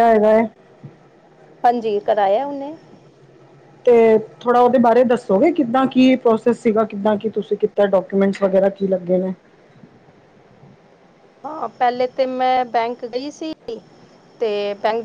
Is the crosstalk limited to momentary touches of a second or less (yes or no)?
yes